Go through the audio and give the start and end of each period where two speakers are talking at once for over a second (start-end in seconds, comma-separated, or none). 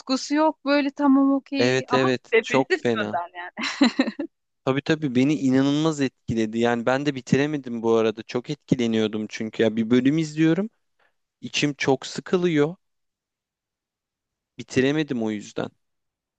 1.6-3.2